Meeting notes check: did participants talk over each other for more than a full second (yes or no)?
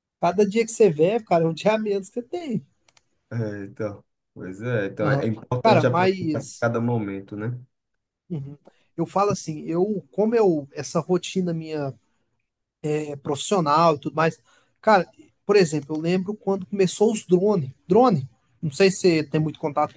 yes